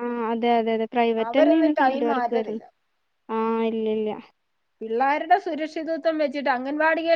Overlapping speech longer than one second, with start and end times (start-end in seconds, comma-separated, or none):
1.3-2.6